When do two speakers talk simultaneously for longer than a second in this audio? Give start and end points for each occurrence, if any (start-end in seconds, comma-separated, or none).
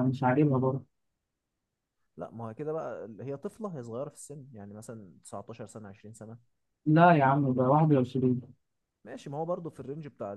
none